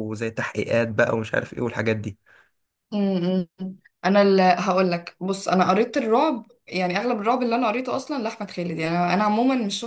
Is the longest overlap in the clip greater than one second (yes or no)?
no